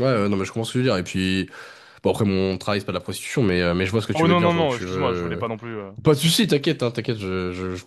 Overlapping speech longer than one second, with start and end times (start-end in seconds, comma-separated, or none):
4.2-5.4